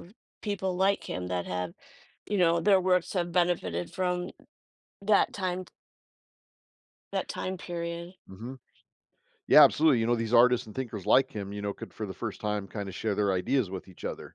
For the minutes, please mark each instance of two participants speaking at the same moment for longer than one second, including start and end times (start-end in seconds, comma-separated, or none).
none